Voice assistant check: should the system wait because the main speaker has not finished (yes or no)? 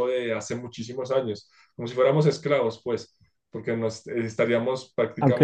yes